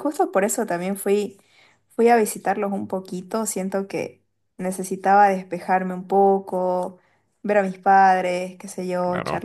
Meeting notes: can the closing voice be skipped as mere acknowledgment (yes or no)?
yes